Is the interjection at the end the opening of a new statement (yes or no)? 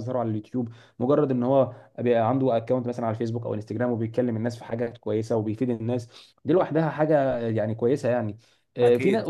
no